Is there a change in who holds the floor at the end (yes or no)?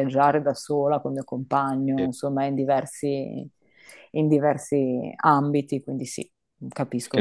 yes